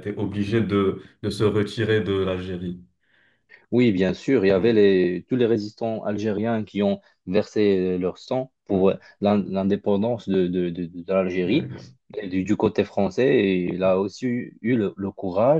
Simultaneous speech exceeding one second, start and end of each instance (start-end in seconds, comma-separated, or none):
none